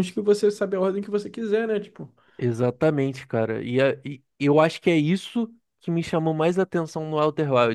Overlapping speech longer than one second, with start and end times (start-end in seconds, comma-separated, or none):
none